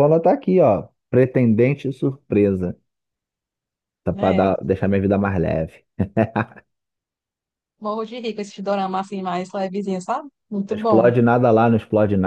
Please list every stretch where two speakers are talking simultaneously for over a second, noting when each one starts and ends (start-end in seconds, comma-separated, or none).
none